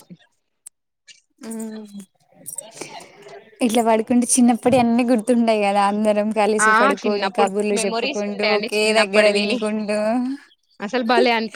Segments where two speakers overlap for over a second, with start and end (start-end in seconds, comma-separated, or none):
6.7-9.5